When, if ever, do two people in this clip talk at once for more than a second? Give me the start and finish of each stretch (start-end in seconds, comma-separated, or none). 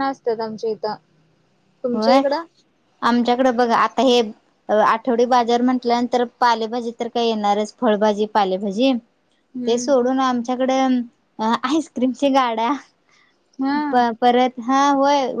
none